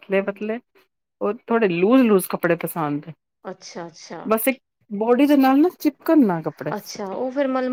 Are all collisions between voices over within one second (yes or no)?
yes